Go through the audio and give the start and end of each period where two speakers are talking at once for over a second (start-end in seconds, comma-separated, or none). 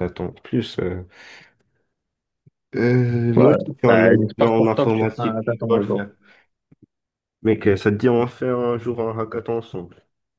3.4-6.0